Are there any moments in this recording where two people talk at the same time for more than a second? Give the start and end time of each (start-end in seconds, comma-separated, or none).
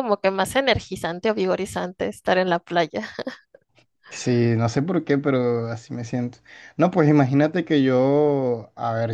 none